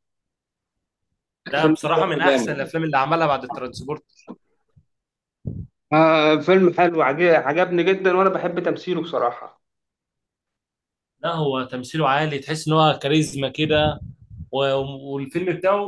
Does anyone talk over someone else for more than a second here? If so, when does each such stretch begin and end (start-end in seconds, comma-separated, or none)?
1.5-2.7